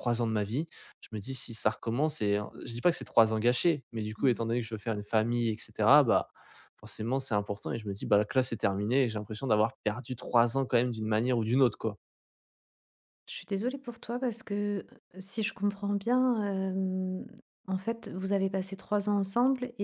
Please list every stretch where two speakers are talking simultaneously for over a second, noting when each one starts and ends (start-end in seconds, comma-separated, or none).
none